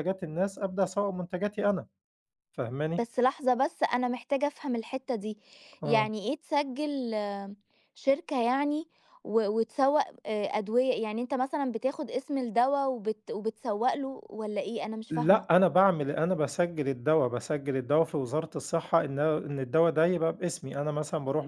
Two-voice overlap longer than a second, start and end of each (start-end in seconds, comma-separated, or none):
none